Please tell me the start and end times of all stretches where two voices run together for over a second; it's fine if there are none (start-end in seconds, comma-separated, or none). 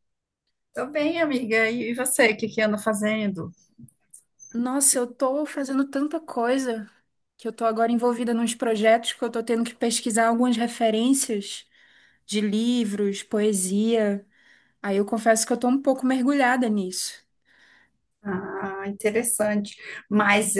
none